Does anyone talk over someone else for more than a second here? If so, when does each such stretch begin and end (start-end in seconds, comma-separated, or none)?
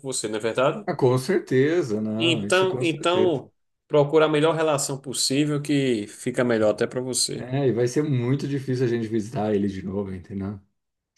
2.2-3.4